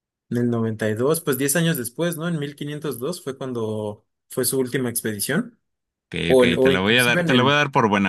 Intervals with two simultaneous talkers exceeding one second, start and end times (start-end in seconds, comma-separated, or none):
6.3-7.6